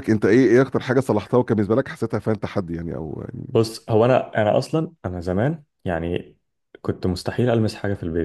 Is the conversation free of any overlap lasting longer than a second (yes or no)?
yes